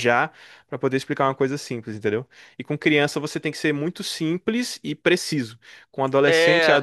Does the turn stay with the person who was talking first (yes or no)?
yes